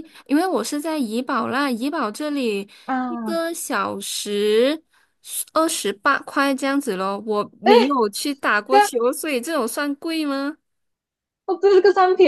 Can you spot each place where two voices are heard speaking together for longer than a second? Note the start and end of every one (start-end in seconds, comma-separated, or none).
none